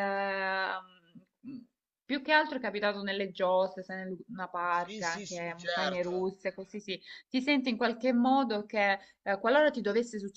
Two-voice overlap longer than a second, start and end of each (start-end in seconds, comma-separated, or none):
4.7-6.3